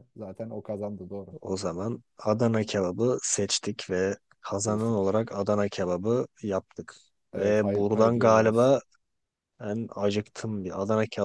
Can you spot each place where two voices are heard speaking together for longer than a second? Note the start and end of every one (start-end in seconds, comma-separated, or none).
7.4-8.7